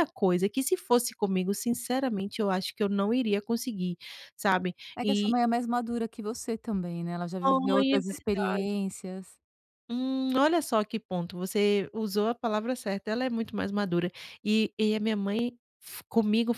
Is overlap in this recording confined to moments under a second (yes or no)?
no